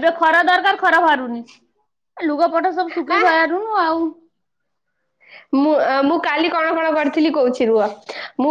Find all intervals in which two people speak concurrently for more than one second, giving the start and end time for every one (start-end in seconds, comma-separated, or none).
none